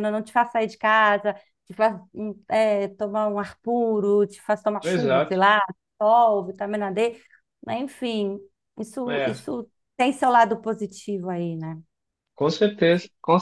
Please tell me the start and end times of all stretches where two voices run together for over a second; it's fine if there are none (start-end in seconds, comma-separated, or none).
none